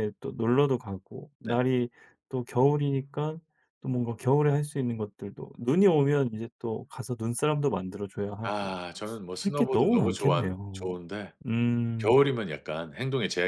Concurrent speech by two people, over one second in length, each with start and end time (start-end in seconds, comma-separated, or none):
9.4-10.9